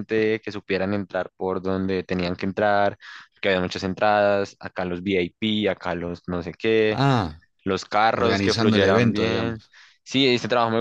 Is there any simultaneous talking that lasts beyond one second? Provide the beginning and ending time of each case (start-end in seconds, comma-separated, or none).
8.1-9.6